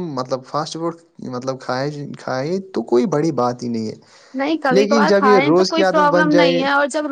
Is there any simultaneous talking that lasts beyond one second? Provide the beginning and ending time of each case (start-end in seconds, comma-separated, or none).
4.8-6.6